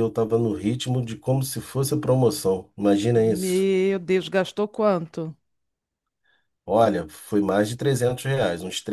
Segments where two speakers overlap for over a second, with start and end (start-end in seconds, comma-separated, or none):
none